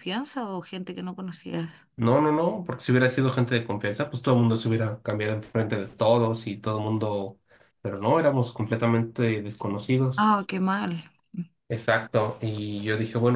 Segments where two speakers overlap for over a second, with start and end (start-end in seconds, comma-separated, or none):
none